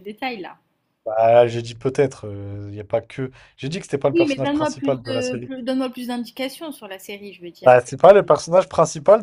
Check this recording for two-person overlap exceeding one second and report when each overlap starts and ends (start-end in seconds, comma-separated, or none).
4.1-5.5